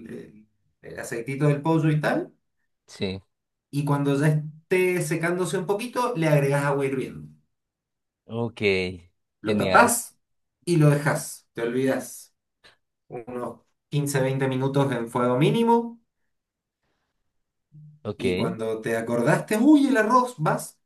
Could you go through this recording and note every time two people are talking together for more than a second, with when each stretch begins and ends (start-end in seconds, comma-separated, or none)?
none